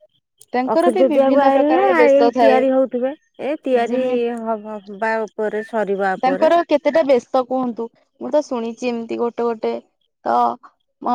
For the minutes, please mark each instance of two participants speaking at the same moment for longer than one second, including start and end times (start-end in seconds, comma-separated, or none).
0.7-2.6